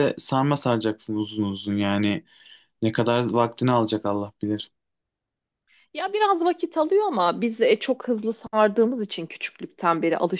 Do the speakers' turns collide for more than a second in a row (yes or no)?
no